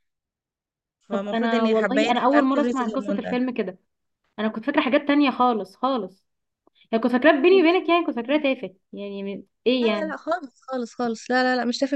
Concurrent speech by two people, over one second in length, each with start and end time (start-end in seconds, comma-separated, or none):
1.1-3.4